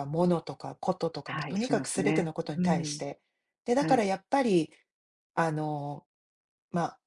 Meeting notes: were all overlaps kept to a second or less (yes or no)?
no